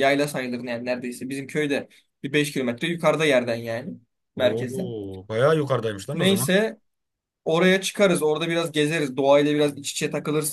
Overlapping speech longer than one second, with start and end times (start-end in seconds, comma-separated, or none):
none